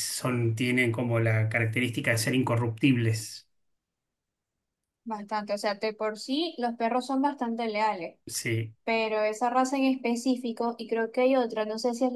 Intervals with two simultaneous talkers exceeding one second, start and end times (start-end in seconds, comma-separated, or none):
none